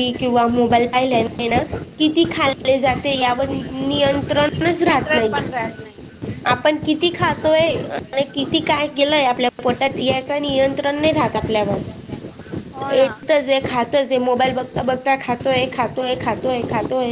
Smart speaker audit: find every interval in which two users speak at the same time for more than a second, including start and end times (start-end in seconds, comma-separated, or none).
none